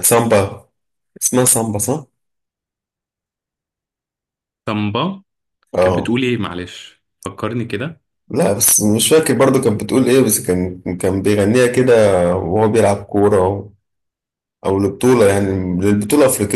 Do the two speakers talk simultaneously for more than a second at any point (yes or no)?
no